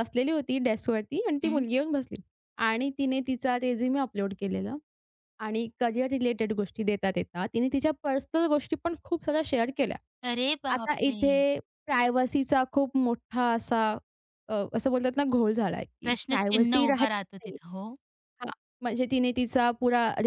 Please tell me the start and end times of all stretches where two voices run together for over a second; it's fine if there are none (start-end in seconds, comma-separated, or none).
16.1-17.6